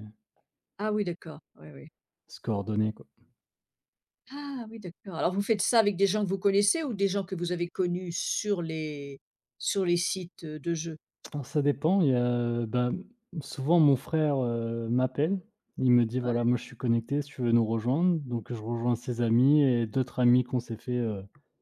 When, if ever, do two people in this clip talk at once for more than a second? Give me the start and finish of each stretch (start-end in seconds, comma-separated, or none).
none